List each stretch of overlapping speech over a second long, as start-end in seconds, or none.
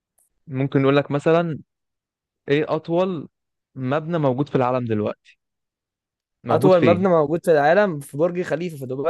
none